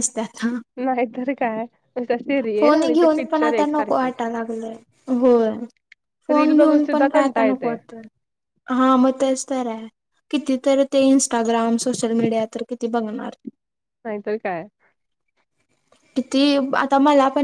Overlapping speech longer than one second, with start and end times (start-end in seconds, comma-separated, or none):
2.6-4.1, 6.3-7.8